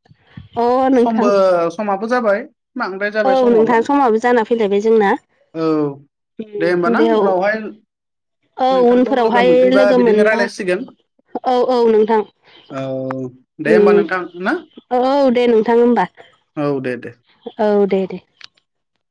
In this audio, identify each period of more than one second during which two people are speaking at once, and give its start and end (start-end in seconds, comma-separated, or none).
8.4-10.4